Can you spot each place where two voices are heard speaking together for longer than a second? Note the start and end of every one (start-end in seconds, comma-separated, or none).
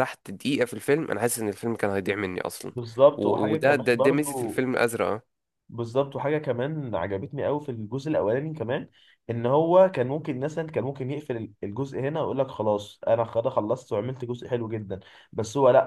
3.2-4.6